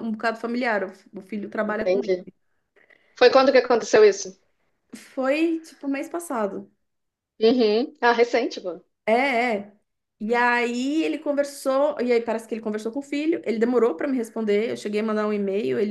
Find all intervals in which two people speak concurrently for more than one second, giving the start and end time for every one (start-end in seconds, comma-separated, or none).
none